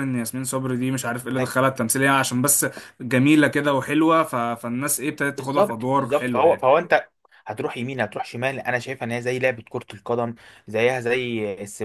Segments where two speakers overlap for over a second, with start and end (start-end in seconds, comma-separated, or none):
5.3-6.7